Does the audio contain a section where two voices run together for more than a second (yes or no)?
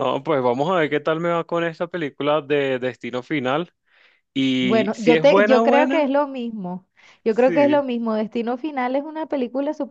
yes